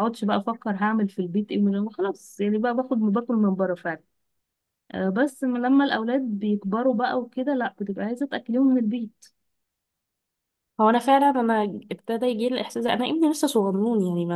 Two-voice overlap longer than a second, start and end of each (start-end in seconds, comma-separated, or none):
none